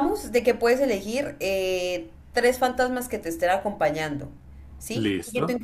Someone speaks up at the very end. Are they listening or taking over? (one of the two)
listening